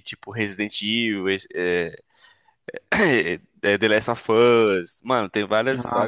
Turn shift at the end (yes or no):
no